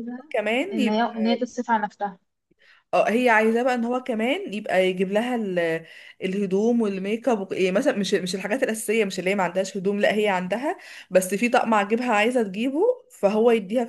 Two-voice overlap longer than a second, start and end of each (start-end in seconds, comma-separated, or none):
none